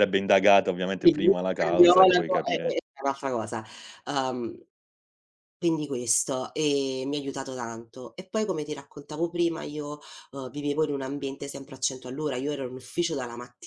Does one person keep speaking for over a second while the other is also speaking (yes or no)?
yes